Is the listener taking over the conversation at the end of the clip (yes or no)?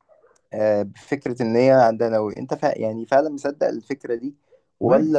no